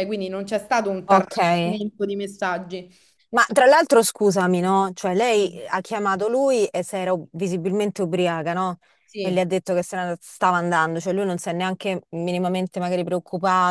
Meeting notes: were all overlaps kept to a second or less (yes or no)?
yes